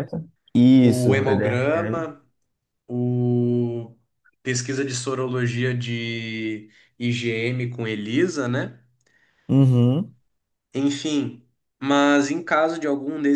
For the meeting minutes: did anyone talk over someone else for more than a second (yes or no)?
yes